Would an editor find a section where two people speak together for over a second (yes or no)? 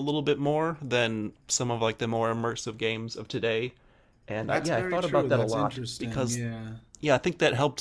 yes